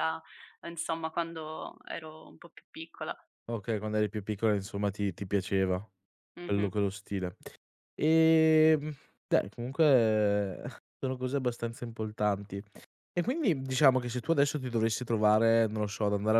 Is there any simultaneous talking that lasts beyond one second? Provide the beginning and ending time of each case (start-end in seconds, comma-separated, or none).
none